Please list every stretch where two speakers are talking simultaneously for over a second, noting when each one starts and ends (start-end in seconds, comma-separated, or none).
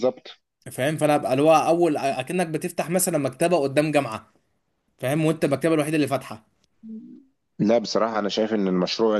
none